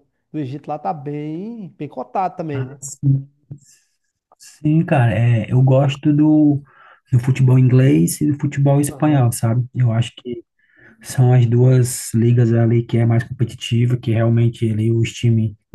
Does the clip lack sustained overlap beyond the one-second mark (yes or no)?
yes